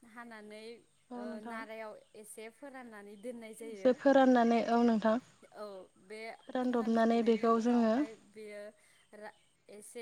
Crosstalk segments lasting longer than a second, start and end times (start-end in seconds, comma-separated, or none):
6.6-7.9